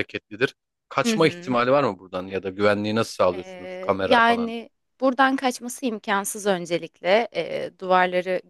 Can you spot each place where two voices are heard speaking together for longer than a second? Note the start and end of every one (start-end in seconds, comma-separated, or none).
3.3-4.5